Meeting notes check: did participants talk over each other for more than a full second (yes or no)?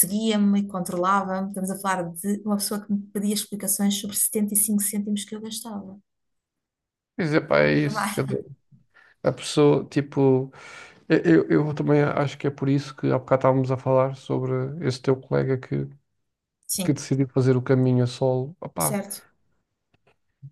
no